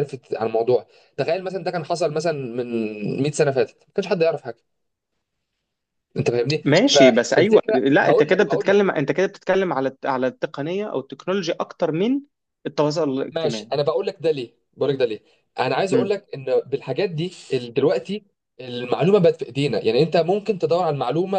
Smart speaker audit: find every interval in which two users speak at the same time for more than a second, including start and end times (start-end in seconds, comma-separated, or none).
6.6-8.8